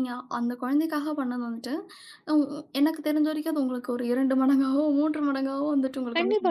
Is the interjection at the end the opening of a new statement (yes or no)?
yes